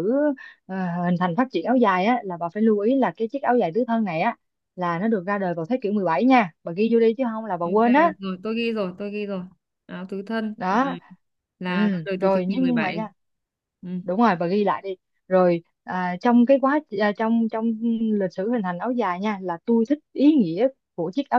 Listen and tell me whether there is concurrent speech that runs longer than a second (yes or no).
yes